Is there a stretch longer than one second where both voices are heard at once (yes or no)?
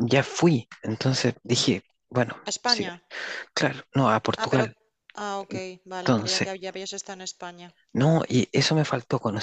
no